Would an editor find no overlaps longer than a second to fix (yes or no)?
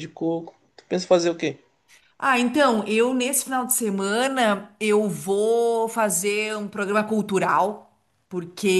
yes